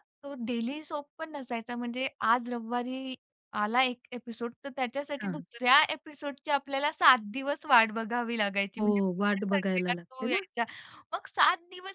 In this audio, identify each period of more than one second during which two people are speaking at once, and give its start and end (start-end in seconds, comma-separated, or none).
8.8-10.4